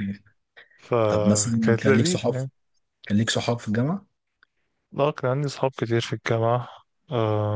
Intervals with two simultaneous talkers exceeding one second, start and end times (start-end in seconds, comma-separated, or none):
1.1-2.3